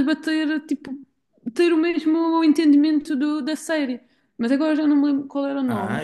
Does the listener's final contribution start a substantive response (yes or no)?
yes